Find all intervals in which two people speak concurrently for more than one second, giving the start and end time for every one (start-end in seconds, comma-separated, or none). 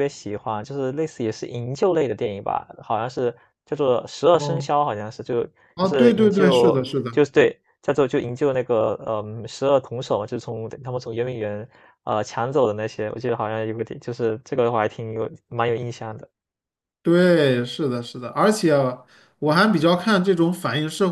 5.7-7.2